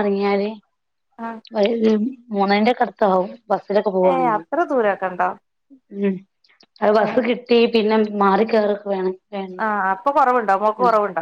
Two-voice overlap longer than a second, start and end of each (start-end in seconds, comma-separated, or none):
none